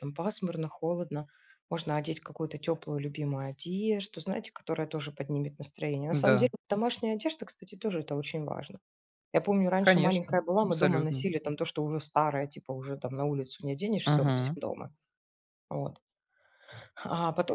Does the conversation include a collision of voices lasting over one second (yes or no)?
yes